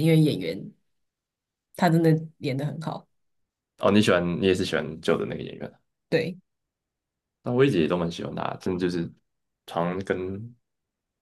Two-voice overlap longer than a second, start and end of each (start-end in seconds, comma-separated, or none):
none